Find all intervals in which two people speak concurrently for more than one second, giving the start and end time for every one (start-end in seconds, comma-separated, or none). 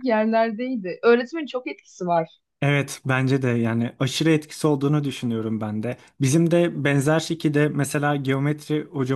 none